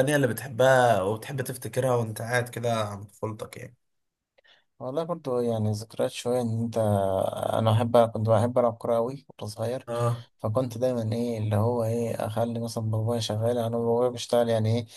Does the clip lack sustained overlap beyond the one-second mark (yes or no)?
yes